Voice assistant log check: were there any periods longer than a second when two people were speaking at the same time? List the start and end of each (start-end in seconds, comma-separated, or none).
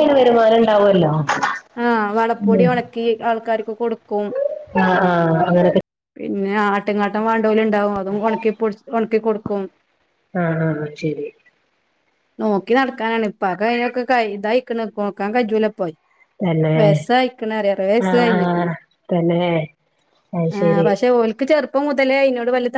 none